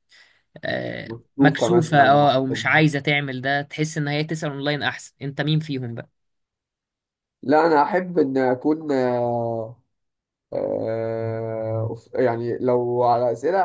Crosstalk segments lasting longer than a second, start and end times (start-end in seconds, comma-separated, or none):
1.1-2.8